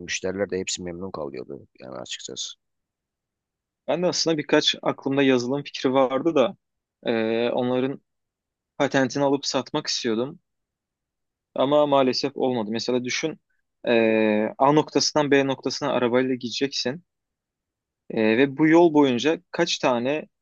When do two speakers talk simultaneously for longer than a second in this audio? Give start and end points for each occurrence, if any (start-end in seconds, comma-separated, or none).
none